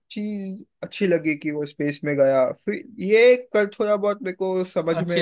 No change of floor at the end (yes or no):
no